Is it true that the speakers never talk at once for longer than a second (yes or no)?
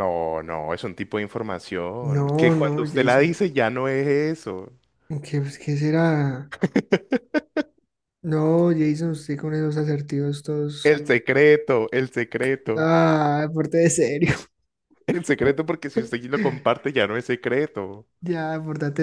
no